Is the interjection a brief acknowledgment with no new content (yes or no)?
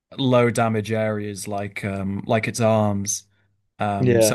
yes